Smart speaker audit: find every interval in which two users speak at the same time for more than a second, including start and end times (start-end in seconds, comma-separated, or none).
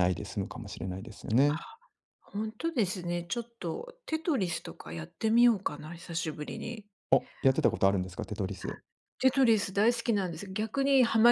none